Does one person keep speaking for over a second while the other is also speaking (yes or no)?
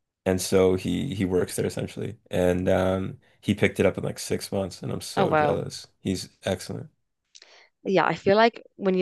no